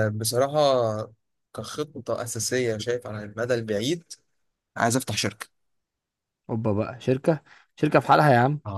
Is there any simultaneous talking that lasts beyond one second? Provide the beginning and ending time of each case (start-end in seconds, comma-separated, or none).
none